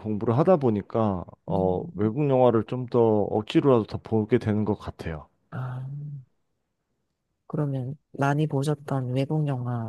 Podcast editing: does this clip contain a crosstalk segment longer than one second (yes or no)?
no